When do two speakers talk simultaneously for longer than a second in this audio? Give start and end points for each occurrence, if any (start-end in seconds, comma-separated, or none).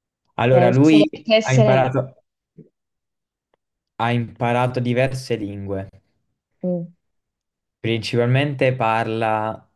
0.5-1.9